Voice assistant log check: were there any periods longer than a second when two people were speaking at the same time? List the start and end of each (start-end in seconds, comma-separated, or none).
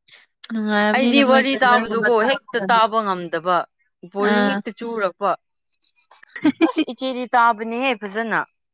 0.9-2.8